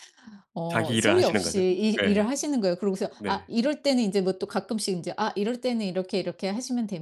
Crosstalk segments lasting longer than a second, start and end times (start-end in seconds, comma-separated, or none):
0.7-2.2